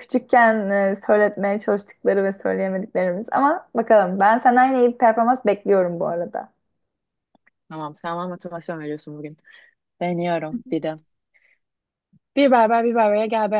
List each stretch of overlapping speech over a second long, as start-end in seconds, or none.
none